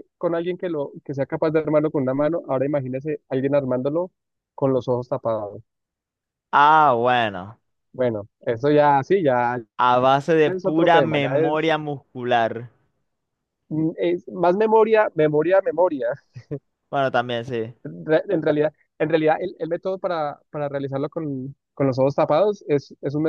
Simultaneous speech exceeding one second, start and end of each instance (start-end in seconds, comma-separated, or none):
10.4-11.7